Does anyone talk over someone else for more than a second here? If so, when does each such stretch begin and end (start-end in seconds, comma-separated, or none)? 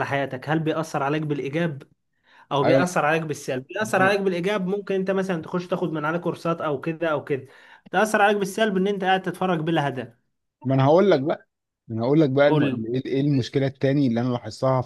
none